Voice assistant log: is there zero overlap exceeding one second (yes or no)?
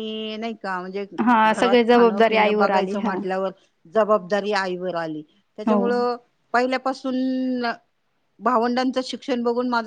no